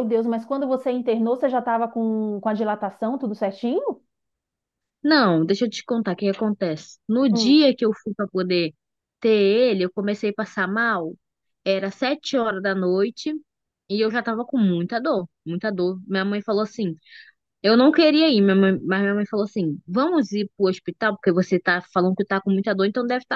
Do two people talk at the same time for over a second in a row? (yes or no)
no